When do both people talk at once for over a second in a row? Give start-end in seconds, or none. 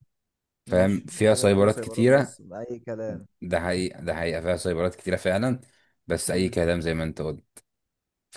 0.7-2.4